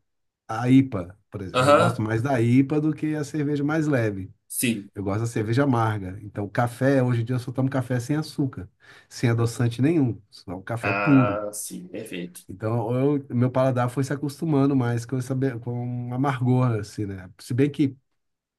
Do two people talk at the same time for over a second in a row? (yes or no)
no